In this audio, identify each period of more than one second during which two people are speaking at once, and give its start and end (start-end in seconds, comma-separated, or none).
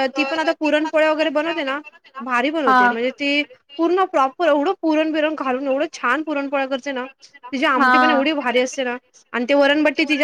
none